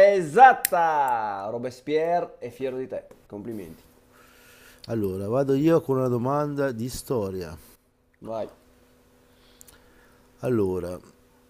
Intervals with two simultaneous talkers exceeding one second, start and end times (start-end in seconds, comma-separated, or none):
none